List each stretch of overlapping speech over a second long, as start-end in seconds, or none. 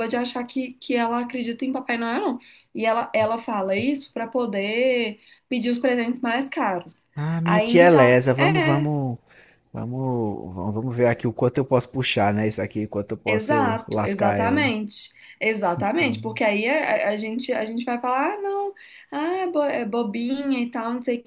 7.4-8.9, 13.3-14.7